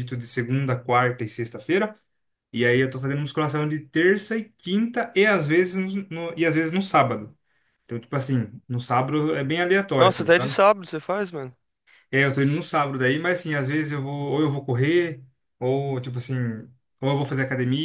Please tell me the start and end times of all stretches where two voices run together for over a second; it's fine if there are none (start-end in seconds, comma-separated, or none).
none